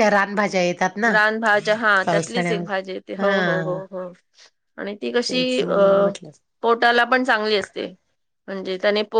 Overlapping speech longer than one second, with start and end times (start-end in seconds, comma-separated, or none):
2.0-3.8